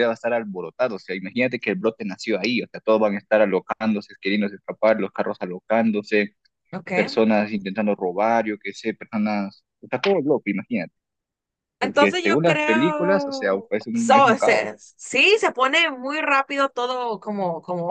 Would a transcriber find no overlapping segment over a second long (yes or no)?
no